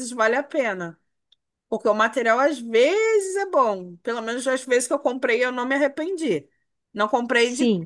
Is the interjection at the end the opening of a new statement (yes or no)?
no